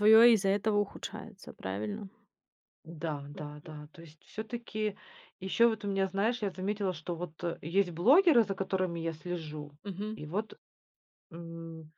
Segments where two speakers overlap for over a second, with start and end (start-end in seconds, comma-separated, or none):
none